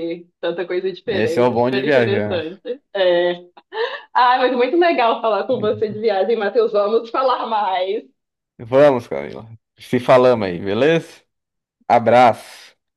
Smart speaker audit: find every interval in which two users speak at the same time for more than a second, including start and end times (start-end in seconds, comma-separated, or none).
1.1-2.4